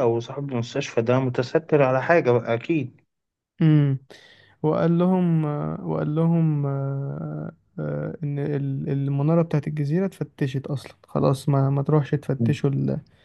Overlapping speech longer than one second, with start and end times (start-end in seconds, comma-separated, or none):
none